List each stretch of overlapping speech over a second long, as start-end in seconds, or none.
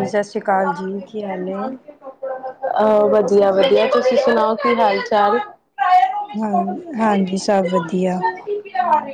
none